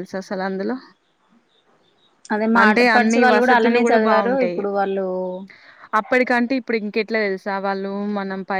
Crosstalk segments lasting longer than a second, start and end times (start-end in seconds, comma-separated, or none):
2.6-4.6